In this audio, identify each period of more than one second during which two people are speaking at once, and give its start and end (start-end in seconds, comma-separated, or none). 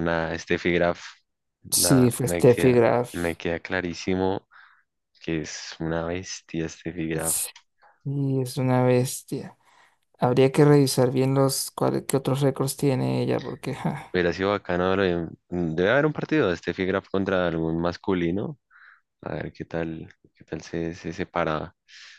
1.7-3.1